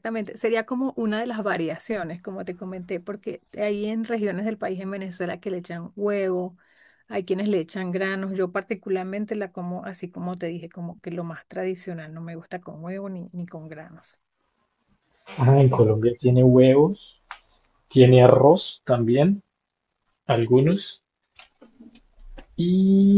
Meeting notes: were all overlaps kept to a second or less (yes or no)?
yes